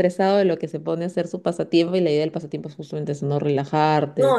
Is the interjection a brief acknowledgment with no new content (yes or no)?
no